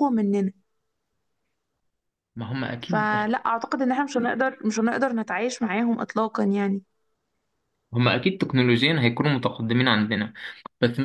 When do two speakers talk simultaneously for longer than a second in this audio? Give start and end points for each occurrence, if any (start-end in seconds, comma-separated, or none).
none